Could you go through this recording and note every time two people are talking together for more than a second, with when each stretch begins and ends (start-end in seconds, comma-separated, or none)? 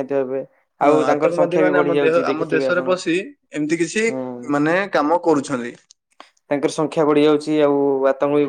0.8-2.9